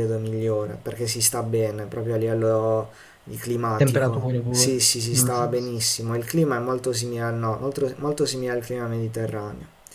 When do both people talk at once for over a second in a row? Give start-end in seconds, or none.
3.8-5.3